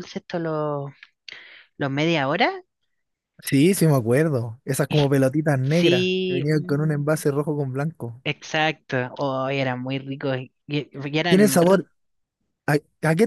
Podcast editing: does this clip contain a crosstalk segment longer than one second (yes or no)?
yes